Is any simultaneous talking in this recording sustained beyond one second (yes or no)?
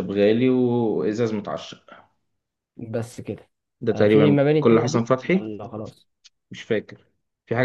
yes